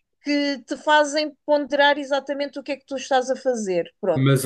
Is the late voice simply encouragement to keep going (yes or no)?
no